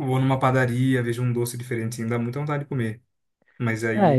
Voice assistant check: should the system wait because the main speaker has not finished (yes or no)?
no